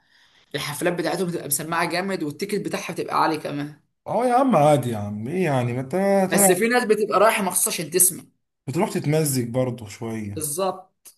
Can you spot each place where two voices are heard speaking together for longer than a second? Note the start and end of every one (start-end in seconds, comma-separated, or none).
none